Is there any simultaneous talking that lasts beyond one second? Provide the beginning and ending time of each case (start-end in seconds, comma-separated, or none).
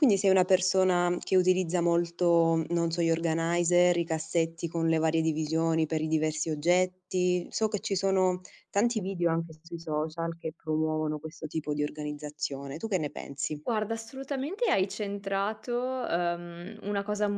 none